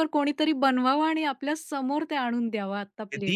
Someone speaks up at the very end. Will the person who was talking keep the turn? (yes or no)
no